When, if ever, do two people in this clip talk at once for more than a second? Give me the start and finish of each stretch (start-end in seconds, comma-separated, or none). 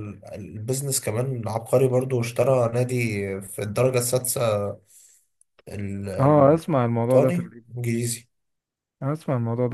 6.2-7.7